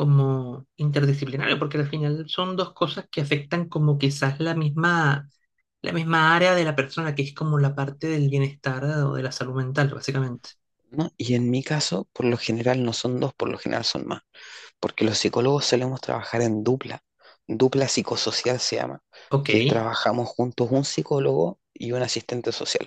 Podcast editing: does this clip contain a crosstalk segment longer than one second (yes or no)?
no